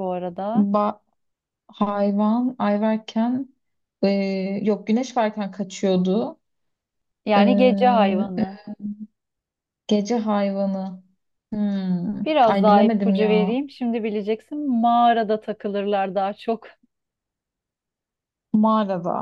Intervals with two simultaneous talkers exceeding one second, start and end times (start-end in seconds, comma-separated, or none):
12.2-13.6